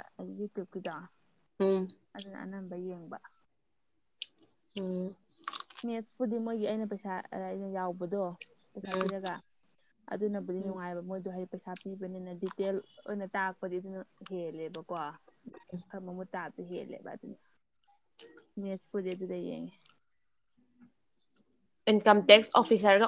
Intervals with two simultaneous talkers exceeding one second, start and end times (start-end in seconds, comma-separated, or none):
none